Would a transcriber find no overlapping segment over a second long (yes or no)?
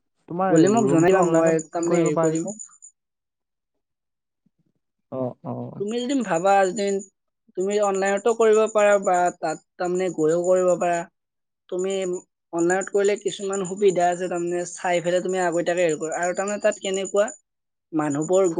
no